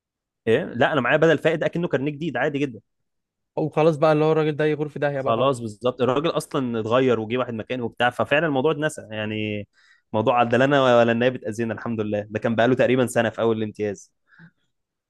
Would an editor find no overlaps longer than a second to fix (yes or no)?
yes